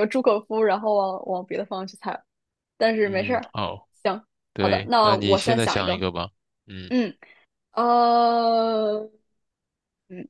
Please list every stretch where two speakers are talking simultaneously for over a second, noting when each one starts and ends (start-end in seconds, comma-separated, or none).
4.6-6.0